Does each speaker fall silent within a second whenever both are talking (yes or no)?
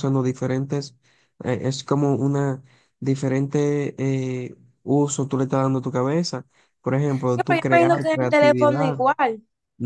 no